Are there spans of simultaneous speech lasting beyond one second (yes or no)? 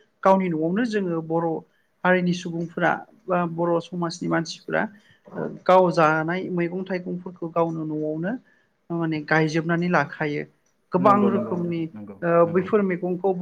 yes